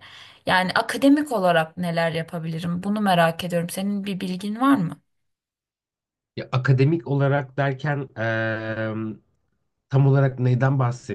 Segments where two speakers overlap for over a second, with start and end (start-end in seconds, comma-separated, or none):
none